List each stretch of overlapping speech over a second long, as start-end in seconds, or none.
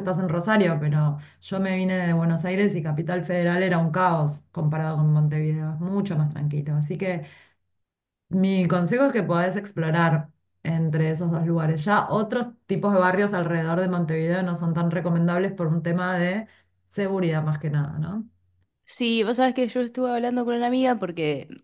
none